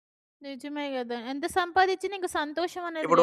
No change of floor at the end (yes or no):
no